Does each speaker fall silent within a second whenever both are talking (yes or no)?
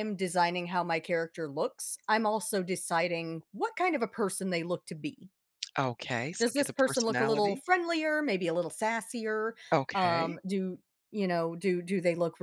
no